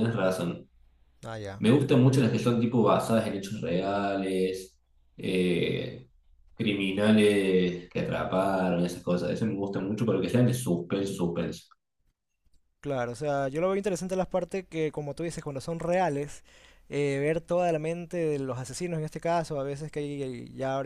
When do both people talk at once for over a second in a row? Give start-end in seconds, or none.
none